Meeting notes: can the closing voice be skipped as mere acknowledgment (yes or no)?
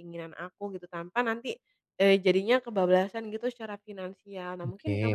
yes